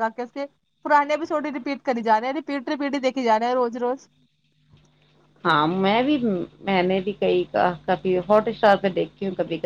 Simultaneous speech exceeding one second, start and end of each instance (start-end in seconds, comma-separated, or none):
none